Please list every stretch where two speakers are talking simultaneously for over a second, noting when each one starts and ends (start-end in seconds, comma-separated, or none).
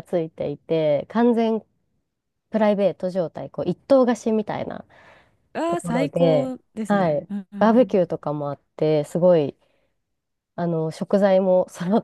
5.7-7.9